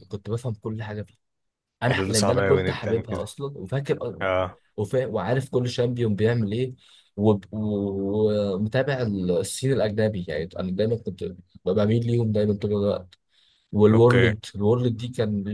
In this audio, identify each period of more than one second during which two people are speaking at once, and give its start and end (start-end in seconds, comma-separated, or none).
1.9-3.2